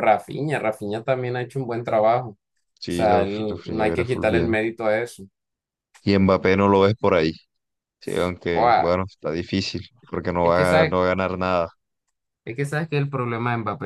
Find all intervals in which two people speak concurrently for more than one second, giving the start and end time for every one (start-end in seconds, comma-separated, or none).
2.9-4.6